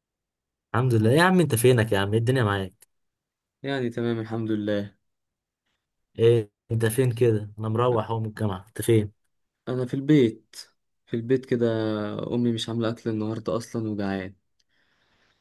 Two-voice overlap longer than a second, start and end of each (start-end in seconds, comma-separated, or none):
none